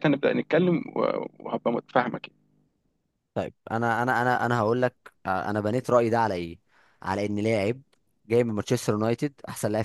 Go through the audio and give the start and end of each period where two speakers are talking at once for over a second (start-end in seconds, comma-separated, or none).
none